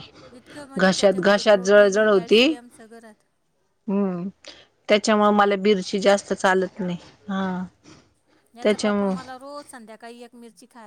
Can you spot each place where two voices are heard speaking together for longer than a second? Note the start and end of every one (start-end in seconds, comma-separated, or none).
0.8-2.5